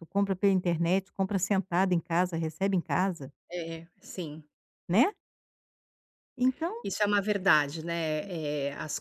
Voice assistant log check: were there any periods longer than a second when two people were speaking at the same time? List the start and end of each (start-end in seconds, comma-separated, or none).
none